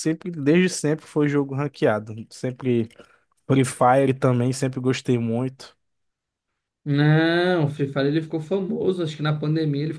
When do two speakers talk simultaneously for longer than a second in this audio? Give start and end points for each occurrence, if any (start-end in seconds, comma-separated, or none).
none